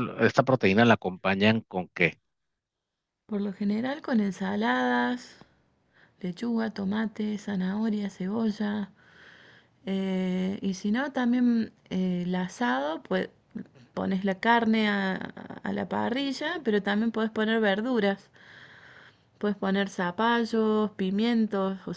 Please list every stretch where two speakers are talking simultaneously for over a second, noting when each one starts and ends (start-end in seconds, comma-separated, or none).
none